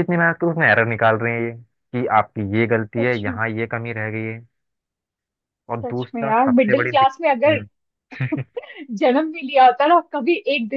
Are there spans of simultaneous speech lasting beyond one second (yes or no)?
yes